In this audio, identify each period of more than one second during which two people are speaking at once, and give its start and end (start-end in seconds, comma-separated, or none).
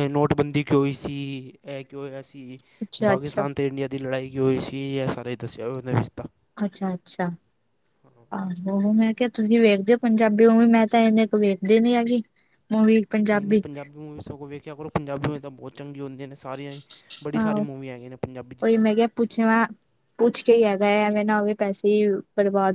none